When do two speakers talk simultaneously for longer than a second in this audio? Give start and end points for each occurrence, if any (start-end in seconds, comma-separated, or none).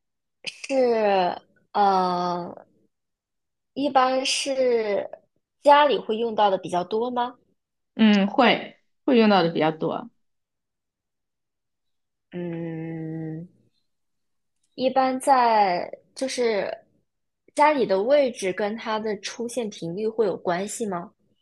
none